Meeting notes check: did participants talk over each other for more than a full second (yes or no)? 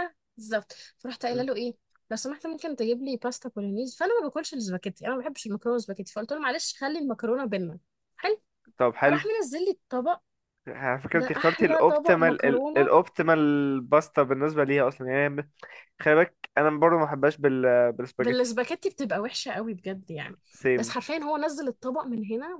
yes